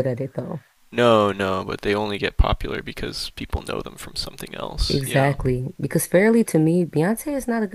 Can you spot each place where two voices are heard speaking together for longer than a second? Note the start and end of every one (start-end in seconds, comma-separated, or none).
none